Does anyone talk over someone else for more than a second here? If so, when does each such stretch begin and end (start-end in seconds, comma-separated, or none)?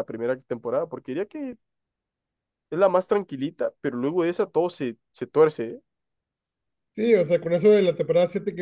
none